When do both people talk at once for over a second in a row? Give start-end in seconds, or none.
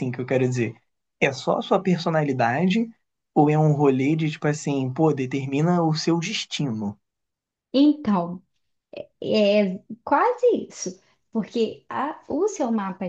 none